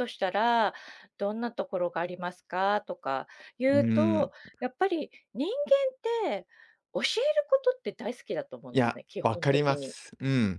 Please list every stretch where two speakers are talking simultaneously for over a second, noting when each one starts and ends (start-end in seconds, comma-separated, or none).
8.7-9.9